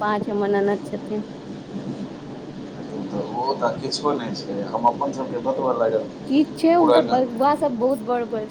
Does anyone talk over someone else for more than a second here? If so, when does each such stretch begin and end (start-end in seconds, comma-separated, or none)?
none